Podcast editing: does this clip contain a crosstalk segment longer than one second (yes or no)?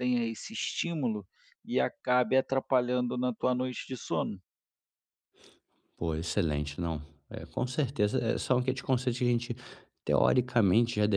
no